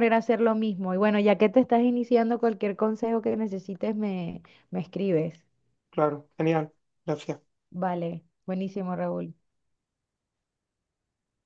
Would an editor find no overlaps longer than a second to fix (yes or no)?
yes